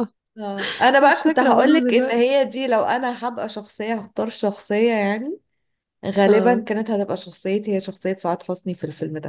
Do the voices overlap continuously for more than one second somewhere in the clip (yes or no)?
yes